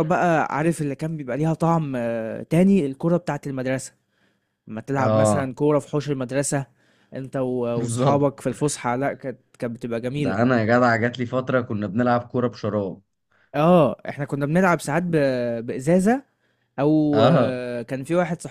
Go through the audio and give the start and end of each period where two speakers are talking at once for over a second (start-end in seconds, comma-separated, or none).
none